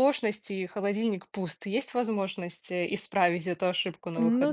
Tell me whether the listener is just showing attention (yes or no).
no